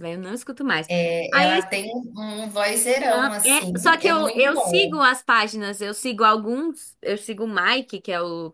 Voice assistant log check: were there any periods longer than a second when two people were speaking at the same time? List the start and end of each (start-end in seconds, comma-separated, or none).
3.1-5.0